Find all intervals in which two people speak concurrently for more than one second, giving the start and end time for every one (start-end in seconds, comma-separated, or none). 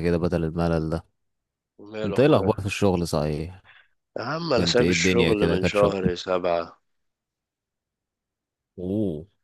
4.5-6.1